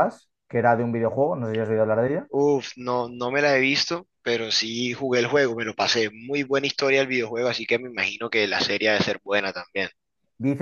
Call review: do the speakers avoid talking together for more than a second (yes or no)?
yes